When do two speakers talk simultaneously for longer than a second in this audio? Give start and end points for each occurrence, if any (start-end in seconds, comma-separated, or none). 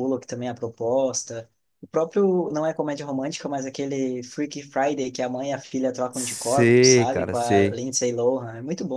6.1-7.8